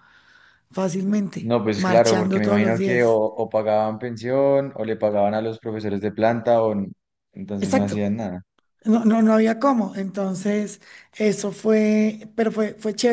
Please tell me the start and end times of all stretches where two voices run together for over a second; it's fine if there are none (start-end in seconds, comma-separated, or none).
1.4-3.2